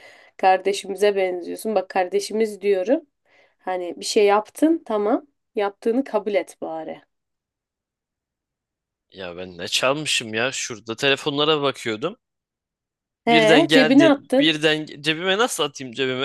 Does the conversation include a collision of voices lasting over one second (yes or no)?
yes